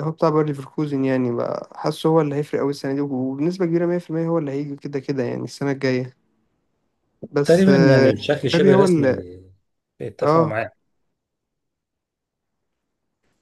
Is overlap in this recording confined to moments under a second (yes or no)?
no